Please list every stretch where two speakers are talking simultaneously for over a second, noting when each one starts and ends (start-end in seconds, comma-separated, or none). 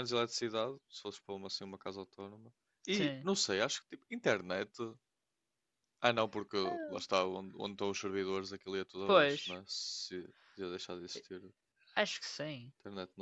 none